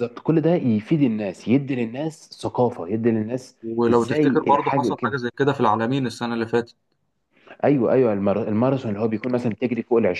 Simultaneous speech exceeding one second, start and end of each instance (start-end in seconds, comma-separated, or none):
3.6-5.2